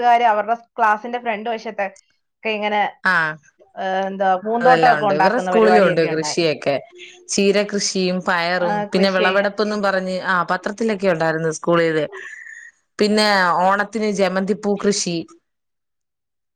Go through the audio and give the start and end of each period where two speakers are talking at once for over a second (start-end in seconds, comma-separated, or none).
4.6-6.5